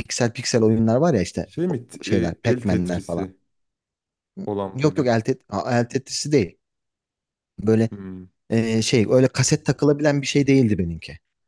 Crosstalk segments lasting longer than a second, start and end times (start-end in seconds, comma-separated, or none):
1.4-3.3